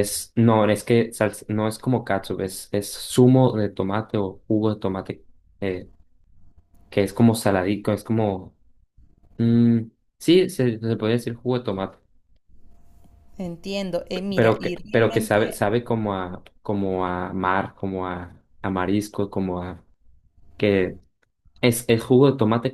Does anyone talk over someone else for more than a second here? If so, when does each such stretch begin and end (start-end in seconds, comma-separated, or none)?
14.1-15.6